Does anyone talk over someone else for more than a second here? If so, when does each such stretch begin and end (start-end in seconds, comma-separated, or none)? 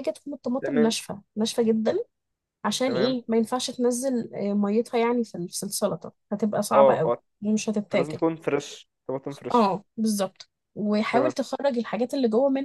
none